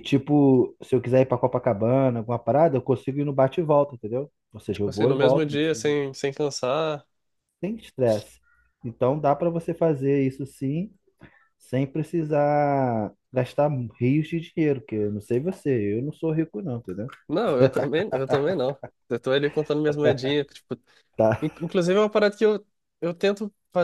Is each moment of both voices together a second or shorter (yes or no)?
no